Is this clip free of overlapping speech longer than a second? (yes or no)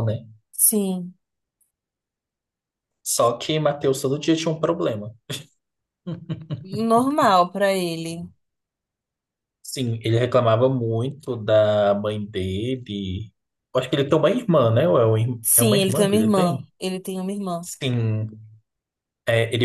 no